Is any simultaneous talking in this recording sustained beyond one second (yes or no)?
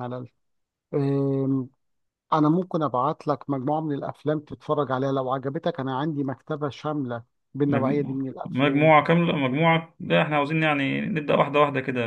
yes